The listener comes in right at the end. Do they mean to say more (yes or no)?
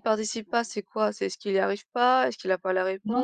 yes